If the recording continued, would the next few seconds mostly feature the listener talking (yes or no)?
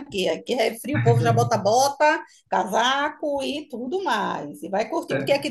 no